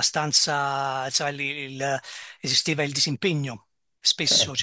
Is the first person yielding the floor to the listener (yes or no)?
no